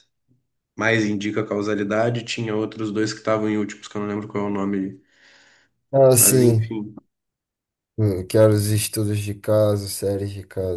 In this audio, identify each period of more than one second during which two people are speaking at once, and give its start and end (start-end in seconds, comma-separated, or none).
none